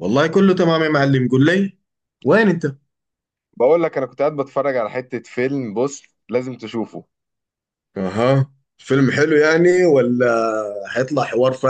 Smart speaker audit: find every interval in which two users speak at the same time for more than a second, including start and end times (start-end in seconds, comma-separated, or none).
none